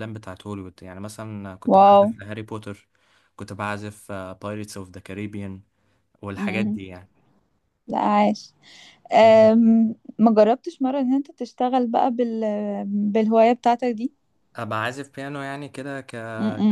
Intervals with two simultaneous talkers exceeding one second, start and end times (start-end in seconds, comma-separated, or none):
none